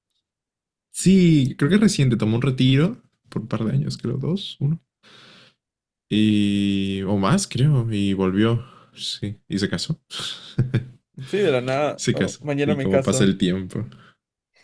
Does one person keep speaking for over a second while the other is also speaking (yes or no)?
yes